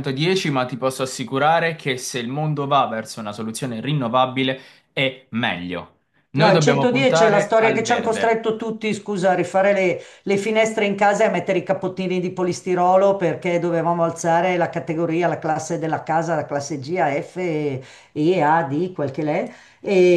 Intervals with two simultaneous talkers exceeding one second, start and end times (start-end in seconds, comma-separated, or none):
6.3-8.4